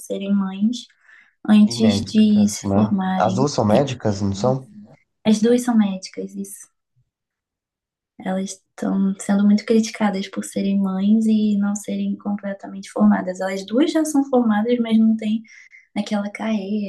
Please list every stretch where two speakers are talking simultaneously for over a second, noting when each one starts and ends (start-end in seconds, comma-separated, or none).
1.7-3.4